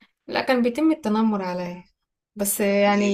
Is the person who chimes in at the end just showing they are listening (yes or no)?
yes